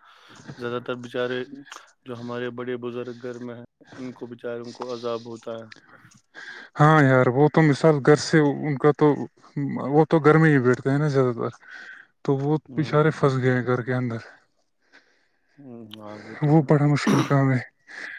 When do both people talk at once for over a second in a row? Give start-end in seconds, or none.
none